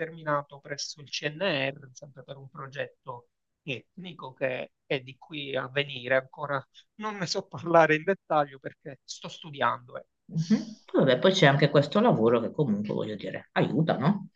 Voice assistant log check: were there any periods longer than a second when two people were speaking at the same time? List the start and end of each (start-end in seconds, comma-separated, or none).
none